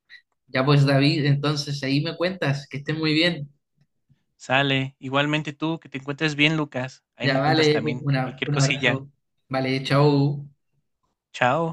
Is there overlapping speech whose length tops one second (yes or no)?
yes